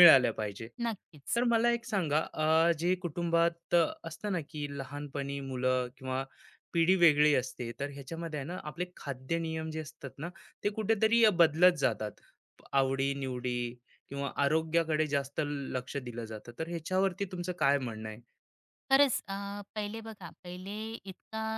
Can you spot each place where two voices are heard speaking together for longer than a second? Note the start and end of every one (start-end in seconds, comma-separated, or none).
none